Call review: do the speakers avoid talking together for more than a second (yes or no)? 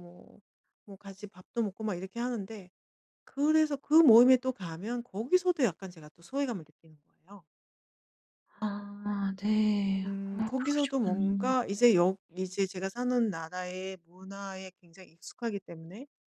no